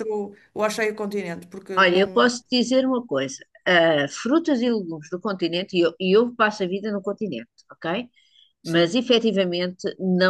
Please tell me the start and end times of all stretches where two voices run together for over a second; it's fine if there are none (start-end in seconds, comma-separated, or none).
none